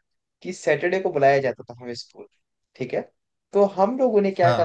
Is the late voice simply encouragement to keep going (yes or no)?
yes